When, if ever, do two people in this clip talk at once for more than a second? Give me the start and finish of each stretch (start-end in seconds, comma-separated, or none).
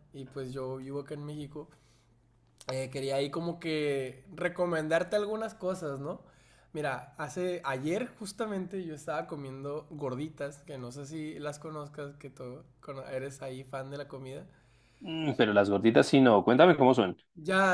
none